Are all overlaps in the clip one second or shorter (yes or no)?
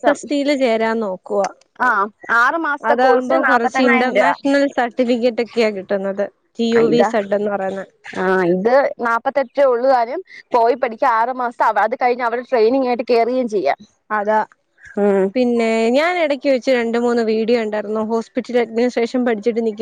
no